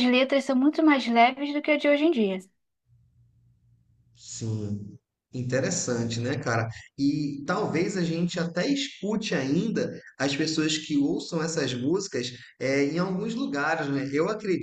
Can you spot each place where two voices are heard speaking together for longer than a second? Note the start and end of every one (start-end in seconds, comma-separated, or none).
none